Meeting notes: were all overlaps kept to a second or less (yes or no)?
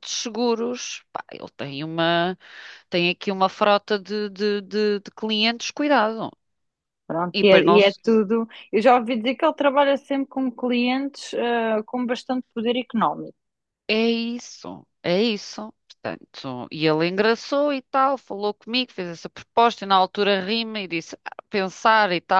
yes